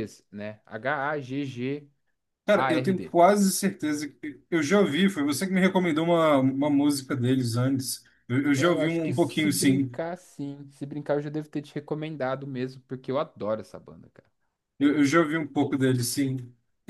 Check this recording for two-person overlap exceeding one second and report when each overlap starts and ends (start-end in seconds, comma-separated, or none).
8.5-9.9